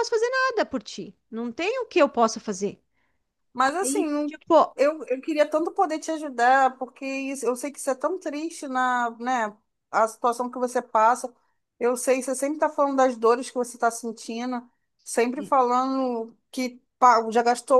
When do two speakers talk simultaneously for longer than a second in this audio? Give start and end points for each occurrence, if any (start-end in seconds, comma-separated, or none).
none